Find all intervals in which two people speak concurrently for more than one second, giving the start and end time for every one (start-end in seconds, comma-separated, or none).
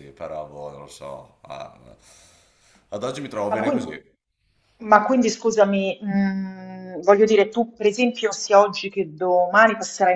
none